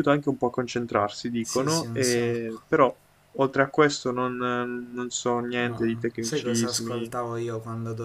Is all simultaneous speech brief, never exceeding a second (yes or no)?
no